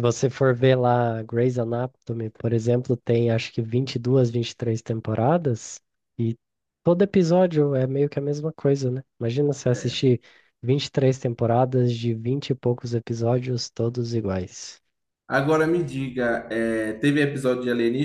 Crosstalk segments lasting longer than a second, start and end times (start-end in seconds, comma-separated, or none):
none